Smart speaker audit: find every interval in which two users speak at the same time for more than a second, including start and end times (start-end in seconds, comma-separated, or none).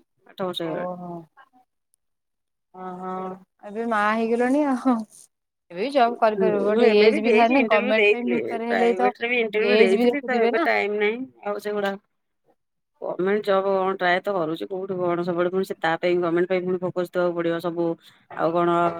6.3-9.1